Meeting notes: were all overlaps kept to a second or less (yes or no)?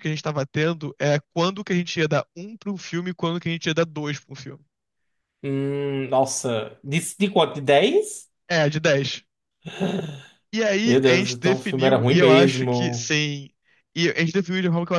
no